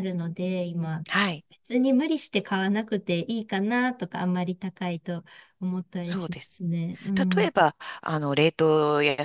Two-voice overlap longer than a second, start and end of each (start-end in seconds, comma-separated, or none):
none